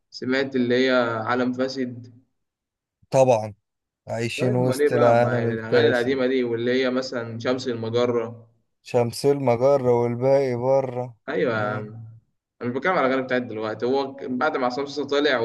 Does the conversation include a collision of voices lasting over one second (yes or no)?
yes